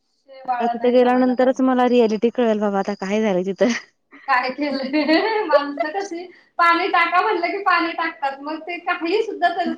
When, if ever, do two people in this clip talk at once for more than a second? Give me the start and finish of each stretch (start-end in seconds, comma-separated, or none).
0.6-1.9